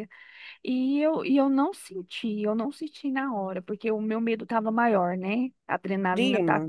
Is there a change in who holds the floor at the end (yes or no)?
no